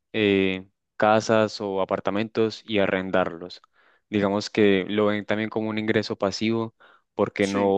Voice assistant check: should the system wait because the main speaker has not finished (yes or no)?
yes